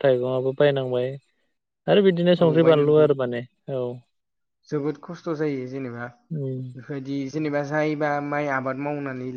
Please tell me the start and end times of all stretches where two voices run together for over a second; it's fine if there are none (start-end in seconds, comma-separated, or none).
none